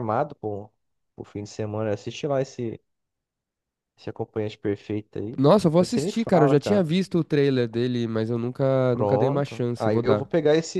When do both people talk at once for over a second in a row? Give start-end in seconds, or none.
5.4-6.9, 8.9-10.3